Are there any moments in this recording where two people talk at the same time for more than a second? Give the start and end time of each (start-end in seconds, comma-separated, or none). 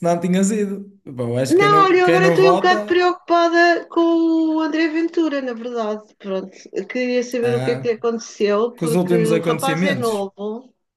1.5-3.0, 8.7-10.3